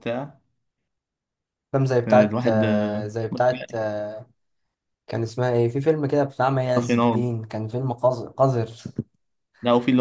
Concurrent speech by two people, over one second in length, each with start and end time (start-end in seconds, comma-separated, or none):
2.1-3.8